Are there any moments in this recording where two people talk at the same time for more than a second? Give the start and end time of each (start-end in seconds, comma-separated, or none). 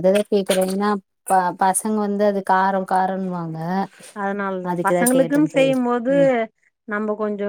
none